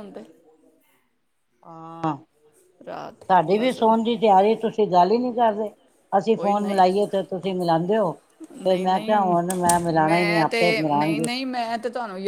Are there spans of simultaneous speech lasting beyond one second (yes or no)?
yes